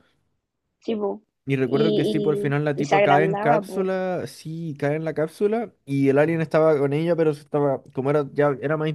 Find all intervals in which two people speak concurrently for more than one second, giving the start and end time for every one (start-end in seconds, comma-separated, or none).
1.6-3.9